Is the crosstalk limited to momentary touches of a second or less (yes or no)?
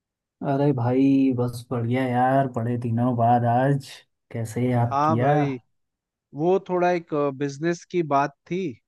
yes